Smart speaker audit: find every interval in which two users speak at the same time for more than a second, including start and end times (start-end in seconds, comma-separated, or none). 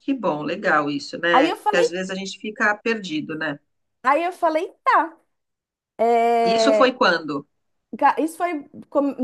none